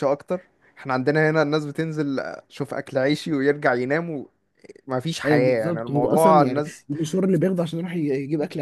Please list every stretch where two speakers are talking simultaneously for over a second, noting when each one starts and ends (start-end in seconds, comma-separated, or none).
5.2-6.9